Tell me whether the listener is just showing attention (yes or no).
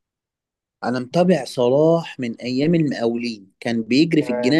yes